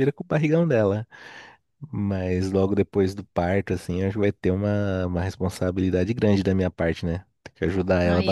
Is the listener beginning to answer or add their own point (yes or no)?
yes